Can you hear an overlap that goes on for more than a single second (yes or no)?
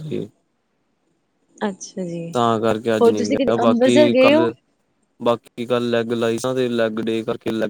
yes